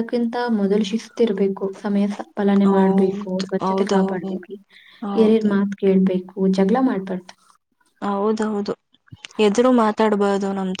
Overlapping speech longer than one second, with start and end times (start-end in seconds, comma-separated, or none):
2.7-4.3